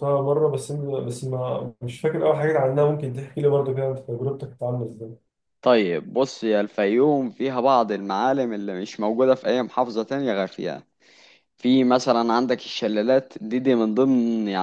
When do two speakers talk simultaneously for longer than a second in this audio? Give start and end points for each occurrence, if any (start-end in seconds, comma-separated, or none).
none